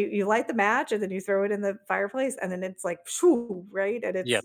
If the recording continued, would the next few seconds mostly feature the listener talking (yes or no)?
yes